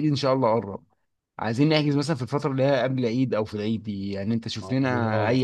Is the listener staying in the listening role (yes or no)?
yes